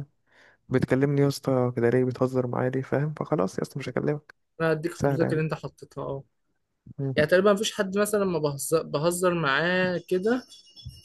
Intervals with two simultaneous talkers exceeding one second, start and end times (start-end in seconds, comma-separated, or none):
none